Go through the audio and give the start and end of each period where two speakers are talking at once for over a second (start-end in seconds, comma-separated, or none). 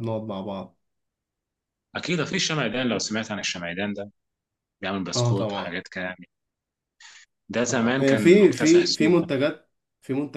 7.7-9.2